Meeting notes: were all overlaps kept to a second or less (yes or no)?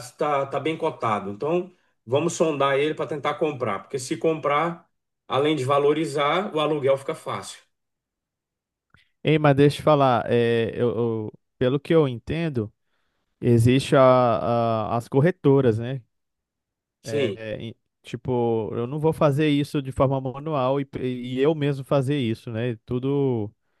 yes